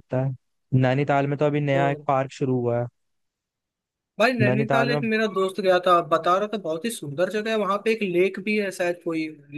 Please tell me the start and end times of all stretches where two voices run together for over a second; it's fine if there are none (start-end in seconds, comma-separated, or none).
none